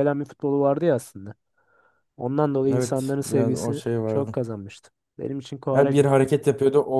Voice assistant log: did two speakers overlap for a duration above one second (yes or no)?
yes